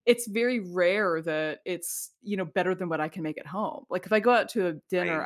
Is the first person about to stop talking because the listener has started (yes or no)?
no